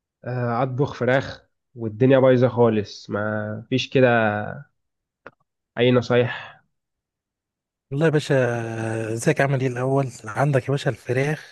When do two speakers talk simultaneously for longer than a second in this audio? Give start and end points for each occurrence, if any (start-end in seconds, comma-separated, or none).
none